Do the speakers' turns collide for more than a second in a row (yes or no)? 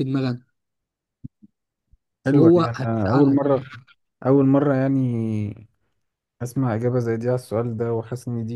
yes